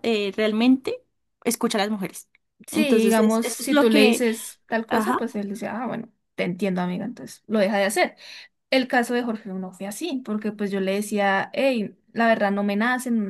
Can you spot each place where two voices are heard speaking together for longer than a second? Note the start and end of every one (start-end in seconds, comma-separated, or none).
2.7-4.2